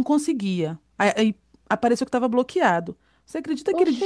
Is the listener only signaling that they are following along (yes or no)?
yes